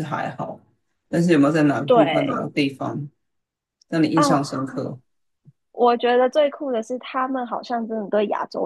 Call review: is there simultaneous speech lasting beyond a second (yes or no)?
no